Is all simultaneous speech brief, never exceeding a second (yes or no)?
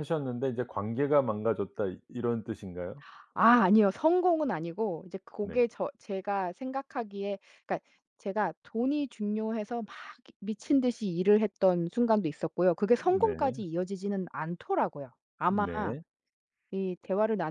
yes